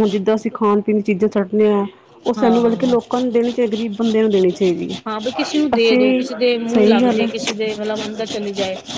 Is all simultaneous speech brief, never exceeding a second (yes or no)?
no